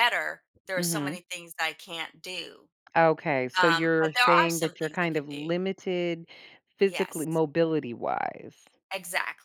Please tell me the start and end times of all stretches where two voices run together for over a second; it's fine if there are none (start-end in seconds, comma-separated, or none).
3.6-5.5